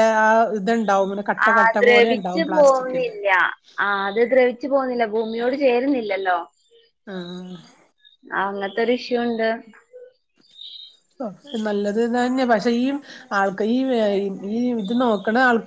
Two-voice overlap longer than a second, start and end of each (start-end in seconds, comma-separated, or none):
none